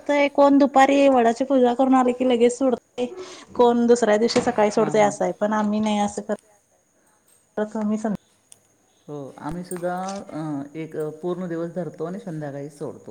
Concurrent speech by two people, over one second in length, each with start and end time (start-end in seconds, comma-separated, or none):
none